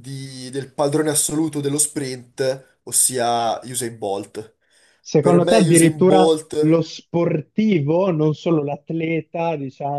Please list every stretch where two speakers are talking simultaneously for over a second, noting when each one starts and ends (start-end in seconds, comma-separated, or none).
5.2-6.5